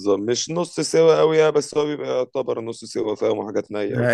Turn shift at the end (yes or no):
yes